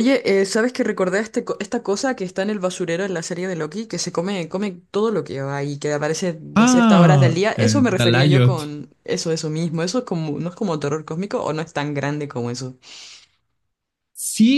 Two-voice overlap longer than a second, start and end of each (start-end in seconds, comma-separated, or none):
6.6-8.6